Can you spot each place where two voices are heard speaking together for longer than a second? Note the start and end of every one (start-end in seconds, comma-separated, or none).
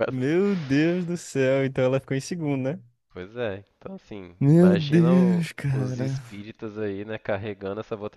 4.4-6.2